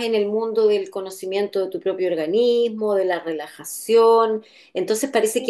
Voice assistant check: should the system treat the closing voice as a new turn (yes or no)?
no